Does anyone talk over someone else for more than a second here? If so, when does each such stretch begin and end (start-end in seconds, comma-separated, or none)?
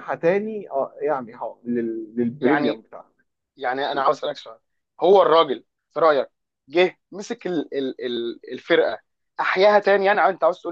none